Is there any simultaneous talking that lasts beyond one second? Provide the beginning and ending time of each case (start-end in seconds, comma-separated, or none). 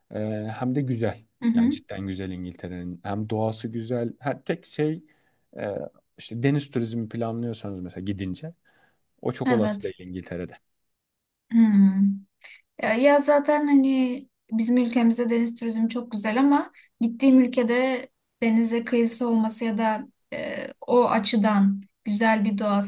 none